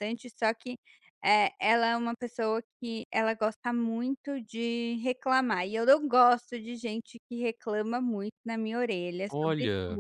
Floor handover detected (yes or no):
no